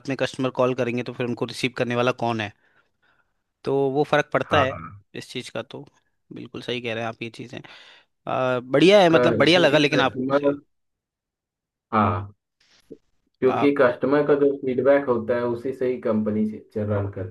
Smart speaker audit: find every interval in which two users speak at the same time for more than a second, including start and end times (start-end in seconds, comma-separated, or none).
9.1-10.5